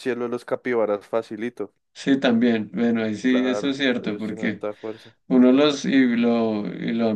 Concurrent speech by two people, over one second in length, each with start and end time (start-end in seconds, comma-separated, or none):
3.3-4.7